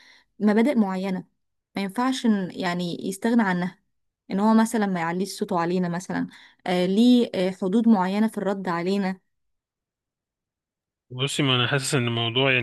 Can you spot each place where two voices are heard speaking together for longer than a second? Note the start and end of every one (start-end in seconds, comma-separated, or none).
none